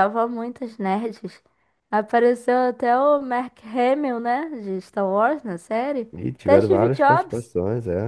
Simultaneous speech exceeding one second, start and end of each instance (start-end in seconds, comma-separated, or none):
6.2-7.5